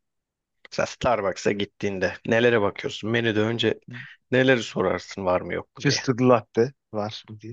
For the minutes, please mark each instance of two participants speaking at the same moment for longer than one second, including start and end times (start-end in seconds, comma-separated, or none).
none